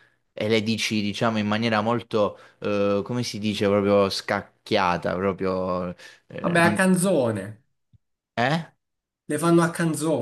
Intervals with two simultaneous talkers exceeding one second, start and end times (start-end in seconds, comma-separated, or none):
none